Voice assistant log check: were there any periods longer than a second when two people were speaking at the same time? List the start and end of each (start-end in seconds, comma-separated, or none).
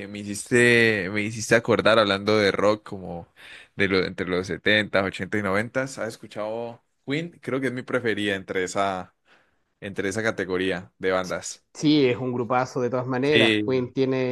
none